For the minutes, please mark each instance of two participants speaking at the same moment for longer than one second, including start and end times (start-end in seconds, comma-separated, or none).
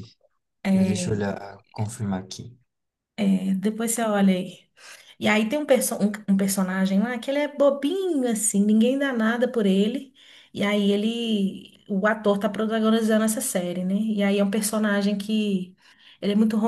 none